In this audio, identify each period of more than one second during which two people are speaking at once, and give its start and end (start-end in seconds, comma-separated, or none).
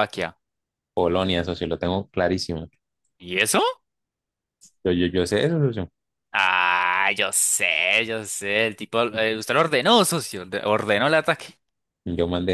none